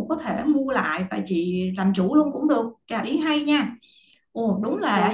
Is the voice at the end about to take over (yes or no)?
yes